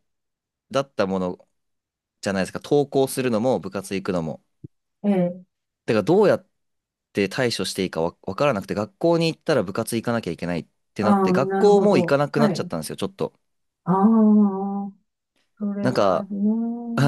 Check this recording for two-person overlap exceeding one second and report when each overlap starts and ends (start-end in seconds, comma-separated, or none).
11.0-12.7